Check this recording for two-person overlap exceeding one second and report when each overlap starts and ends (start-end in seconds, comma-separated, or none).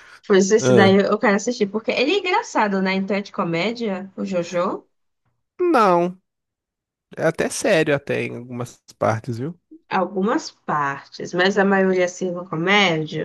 none